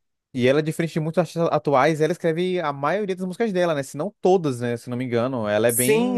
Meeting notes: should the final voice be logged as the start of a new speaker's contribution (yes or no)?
yes